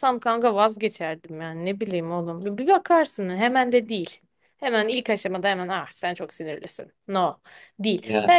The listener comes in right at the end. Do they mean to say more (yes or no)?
no